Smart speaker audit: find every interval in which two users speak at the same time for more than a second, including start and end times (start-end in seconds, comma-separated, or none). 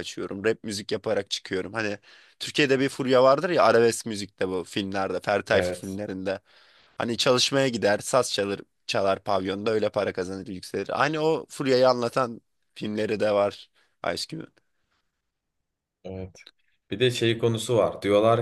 none